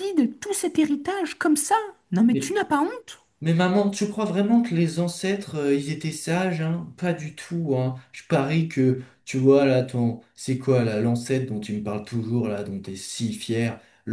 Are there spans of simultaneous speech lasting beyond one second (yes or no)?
no